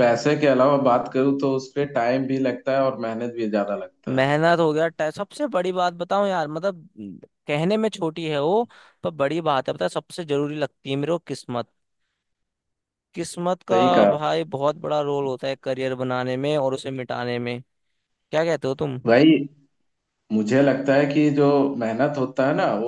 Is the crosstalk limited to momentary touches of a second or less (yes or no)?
yes